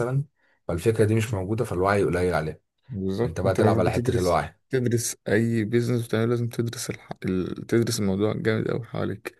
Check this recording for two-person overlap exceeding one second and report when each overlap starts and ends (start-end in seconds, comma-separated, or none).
3.2-4.6